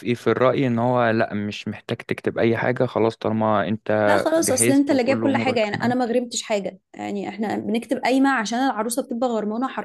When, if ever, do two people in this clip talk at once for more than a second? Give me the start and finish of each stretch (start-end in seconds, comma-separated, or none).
4.4-6.0